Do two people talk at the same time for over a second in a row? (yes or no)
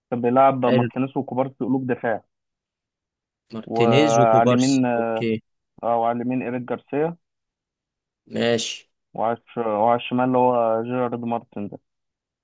yes